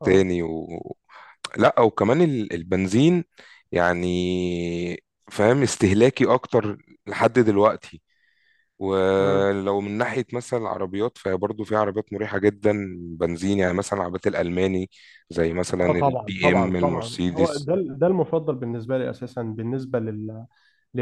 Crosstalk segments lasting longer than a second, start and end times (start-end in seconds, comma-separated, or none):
15.8-17.7